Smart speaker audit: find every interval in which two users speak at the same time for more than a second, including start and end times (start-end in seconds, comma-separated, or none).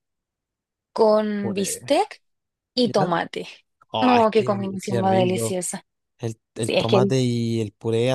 4.0-5.6